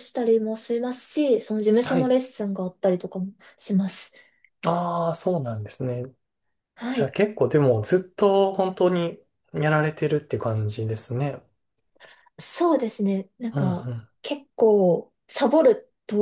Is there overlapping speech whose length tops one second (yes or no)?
no